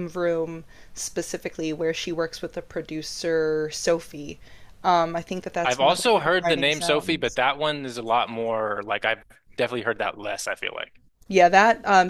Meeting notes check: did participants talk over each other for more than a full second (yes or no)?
yes